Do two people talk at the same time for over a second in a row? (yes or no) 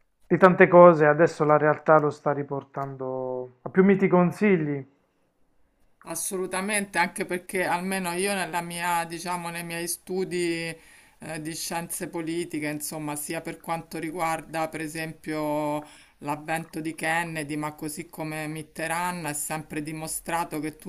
no